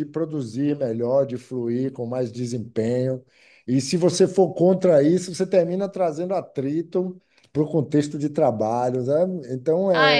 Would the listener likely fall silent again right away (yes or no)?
no